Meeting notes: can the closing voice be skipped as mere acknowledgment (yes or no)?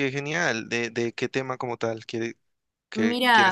no